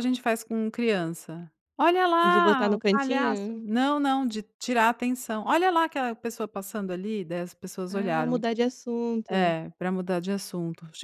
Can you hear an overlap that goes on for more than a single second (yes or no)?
yes